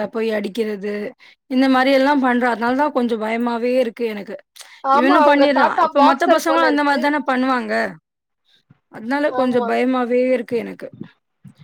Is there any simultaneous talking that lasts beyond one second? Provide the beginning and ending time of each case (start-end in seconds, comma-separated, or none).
5.0-7.0